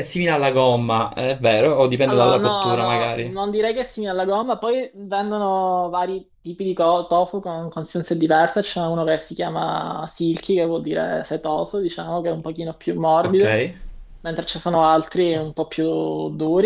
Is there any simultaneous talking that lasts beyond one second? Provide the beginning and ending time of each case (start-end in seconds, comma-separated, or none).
2.0-3.4